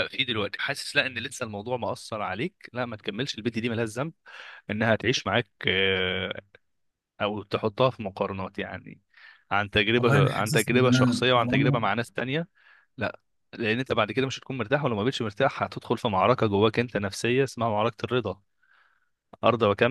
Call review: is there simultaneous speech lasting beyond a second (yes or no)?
yes